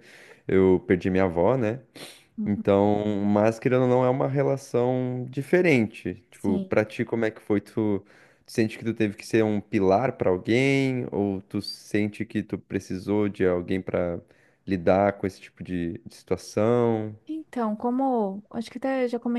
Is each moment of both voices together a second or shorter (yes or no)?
yes